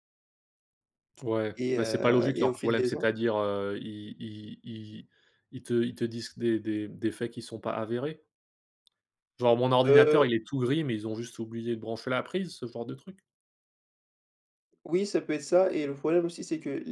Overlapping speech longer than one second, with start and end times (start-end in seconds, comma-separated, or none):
1.6-3.1